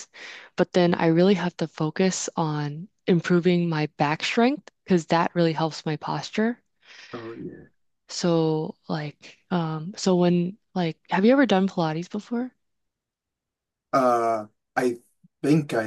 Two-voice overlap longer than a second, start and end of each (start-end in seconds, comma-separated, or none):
none